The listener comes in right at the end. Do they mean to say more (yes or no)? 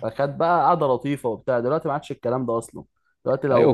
no